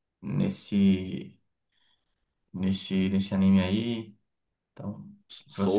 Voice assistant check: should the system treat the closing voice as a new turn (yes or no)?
yes